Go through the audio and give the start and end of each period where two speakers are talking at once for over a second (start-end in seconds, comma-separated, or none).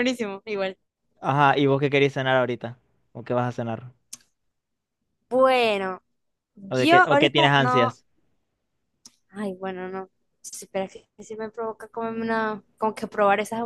6.7-8.0